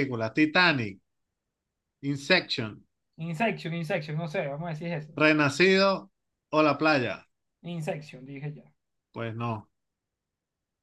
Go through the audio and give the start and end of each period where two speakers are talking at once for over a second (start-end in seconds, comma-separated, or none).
none